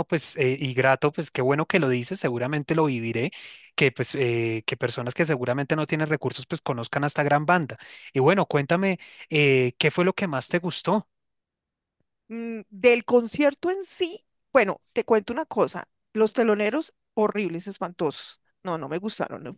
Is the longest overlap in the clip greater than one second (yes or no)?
no